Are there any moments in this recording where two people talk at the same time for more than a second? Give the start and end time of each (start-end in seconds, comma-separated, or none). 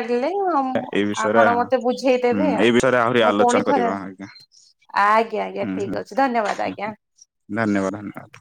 2.3-4.0